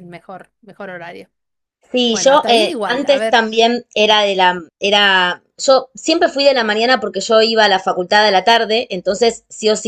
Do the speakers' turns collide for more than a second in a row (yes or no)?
yes